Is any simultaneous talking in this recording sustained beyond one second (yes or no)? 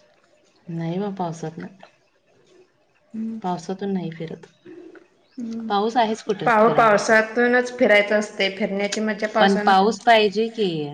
yes